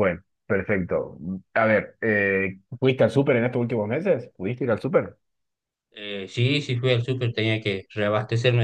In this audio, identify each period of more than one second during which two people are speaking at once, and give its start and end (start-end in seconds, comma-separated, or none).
none